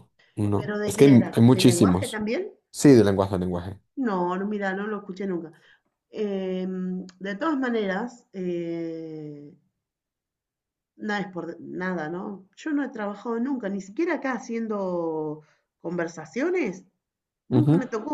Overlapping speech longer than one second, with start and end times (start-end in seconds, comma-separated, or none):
0.5-2.2